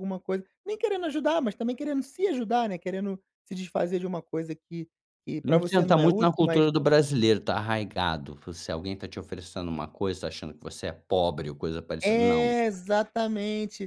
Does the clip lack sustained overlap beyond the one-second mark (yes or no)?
no